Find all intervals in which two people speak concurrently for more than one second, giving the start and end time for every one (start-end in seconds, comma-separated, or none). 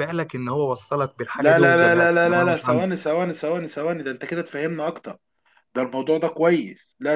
1.4-2.9